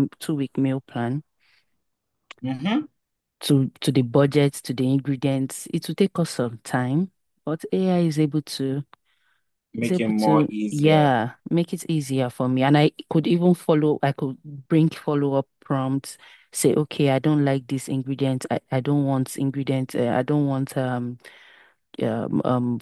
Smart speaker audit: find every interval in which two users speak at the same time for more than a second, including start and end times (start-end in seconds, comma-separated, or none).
9.8-11.1